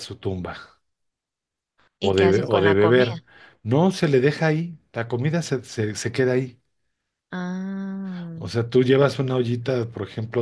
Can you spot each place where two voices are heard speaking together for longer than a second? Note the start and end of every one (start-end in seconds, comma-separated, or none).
2.0-3.2